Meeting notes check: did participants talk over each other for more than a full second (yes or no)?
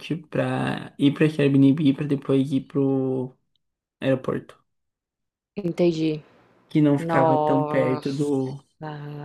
yes